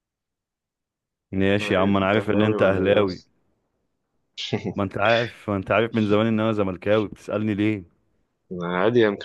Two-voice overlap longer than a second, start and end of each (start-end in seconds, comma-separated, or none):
1.4-3.2